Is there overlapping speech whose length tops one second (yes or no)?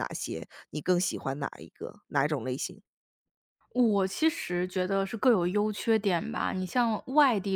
no